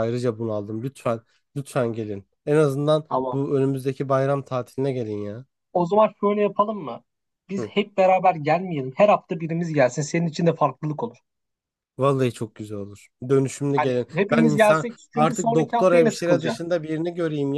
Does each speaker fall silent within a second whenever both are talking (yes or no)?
no